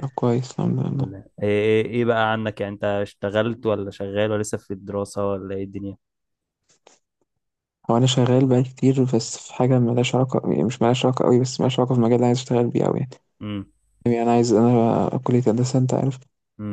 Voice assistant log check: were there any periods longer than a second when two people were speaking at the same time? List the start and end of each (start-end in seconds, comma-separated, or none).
none